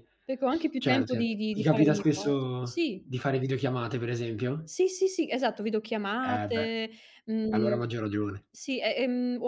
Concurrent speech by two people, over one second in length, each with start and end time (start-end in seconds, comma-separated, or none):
0.8-3.1